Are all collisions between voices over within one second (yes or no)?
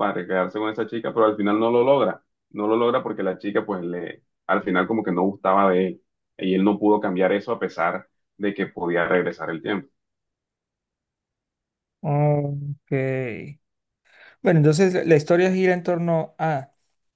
yes